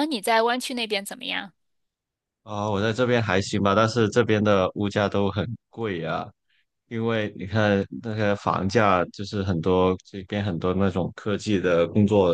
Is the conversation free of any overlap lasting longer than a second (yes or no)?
yes